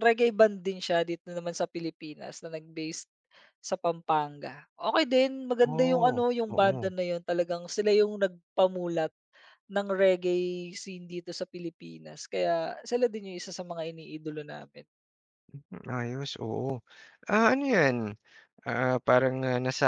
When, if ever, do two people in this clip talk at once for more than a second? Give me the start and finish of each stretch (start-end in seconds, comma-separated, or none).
5.6-6.9